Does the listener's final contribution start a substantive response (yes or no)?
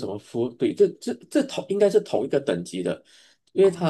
no